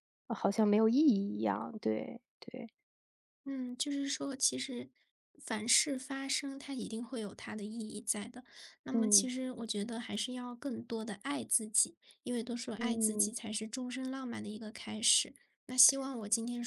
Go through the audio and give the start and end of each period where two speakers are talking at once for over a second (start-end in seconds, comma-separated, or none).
none